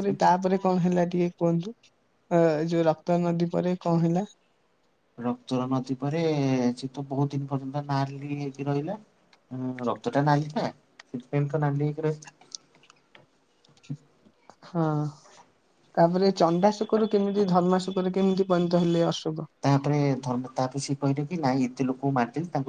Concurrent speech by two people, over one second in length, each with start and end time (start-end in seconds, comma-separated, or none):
none